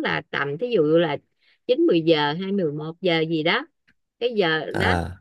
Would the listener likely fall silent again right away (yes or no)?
yes